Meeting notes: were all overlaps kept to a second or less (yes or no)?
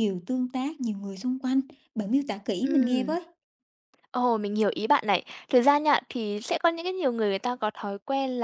yes